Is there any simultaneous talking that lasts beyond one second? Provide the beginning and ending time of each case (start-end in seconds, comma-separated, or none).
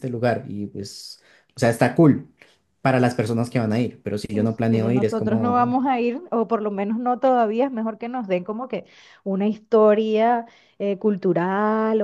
4.3-5.8